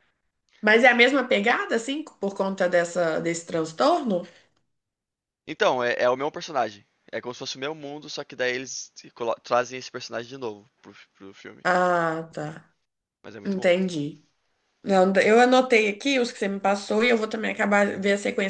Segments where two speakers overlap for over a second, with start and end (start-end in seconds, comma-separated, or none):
none